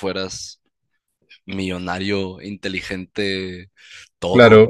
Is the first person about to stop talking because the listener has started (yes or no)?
no